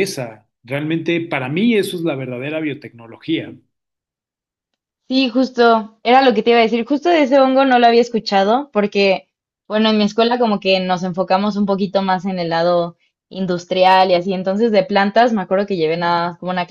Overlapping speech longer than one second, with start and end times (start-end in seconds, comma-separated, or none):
none